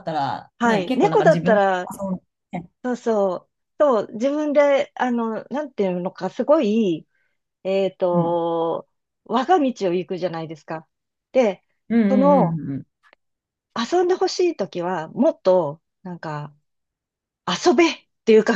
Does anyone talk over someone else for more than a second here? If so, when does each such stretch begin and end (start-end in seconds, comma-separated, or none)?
0.6-1.9